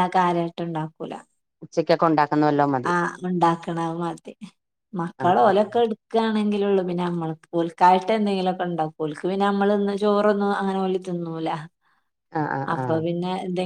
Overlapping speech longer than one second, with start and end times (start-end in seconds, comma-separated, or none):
none